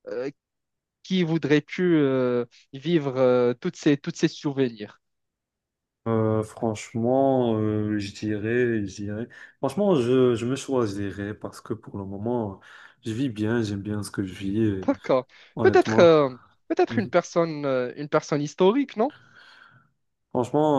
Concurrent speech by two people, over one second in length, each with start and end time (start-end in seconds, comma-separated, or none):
none